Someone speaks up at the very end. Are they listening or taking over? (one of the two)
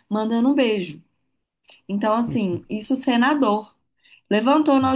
listening